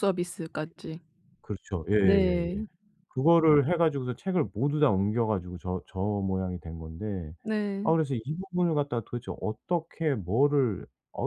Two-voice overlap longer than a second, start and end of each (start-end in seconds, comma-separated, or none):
none